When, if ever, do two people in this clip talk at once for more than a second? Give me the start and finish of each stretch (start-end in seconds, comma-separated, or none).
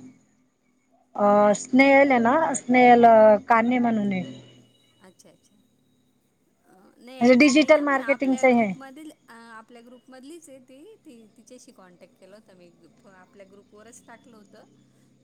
7.0-8.7